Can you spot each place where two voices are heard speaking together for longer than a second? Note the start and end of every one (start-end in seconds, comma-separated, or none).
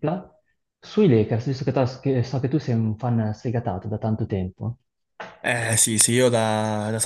none